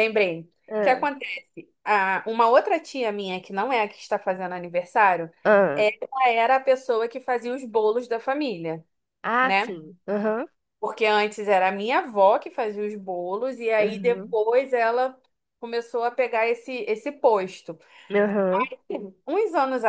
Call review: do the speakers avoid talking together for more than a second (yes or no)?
yes